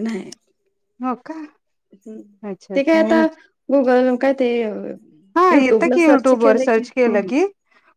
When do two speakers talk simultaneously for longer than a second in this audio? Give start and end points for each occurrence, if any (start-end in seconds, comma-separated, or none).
5.5-7.4